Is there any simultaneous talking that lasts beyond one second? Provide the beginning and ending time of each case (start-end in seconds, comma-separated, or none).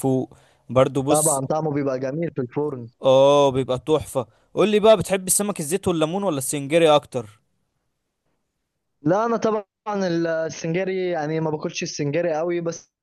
none